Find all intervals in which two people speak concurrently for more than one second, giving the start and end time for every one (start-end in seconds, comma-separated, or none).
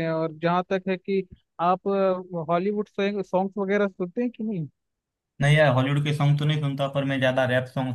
none